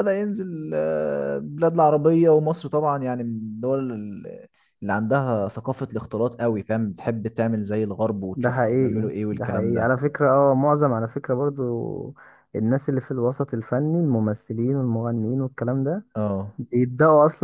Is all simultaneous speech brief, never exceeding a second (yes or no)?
no